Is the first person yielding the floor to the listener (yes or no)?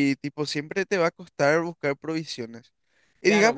yes